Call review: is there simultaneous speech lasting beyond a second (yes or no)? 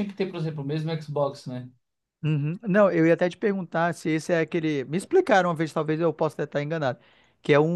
no